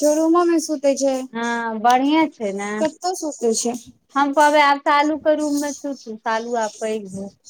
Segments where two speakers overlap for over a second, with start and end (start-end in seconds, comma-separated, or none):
none